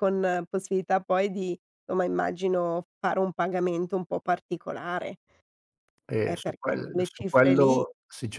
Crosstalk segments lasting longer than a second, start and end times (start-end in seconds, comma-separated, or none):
6.2-7.8